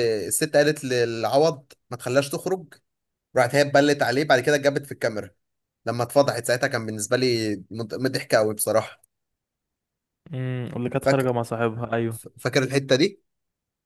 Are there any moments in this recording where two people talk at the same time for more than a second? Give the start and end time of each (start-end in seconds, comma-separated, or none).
none